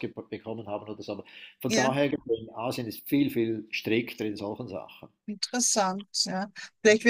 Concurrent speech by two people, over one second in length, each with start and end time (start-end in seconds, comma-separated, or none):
none